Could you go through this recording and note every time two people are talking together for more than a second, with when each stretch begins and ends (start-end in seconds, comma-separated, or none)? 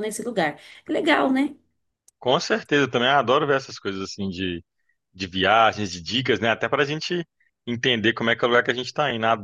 none